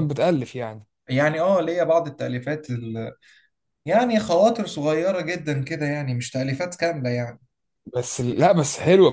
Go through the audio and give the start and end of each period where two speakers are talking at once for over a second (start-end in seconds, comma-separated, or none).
none